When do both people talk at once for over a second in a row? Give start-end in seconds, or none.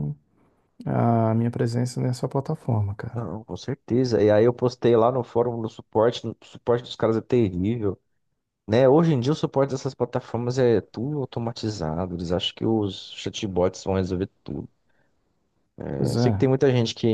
none